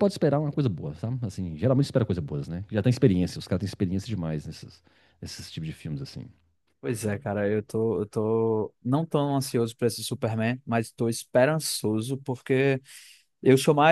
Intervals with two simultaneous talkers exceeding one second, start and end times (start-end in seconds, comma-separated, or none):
none